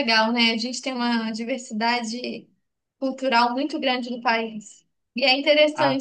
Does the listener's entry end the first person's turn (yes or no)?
no